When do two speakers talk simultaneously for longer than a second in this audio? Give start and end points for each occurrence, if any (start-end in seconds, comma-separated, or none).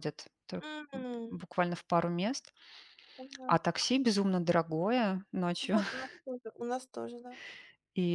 none